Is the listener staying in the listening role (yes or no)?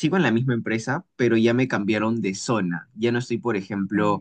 yes